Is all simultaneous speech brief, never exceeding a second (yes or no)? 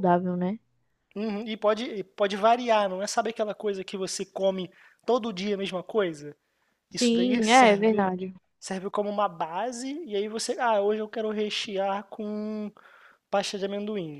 no